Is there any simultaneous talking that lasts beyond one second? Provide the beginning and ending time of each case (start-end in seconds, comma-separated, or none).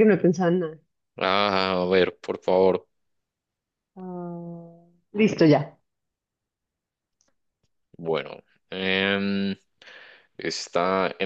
none